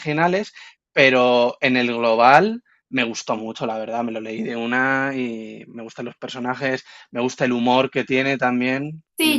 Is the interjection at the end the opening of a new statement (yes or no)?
yes